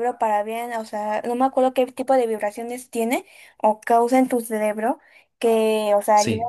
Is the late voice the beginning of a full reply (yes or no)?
no